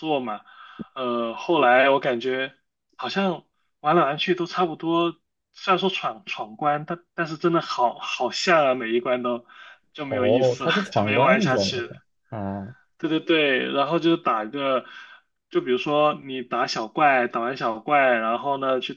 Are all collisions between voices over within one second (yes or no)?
no